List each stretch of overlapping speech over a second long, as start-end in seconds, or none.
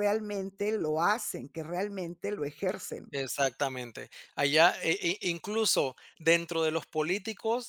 none